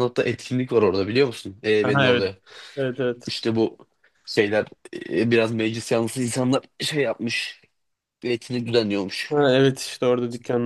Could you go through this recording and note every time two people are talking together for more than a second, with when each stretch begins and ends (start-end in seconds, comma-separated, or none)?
none